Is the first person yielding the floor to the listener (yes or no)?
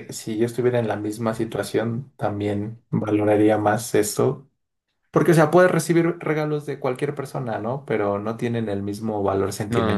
yes